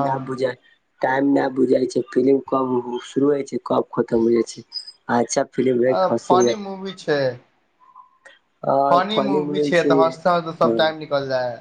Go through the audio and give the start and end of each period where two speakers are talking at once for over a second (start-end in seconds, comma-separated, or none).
9.1-10.8